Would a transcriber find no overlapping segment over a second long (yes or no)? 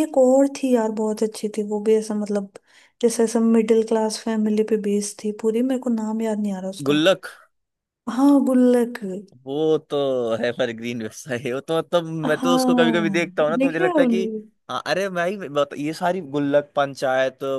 no